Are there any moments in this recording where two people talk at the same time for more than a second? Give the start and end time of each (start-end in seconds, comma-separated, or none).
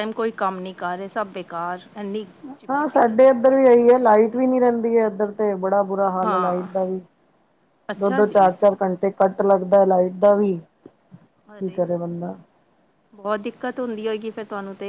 2.7-4.1